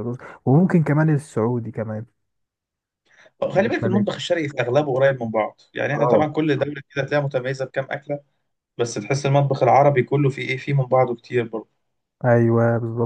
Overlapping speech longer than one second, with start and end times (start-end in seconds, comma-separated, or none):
none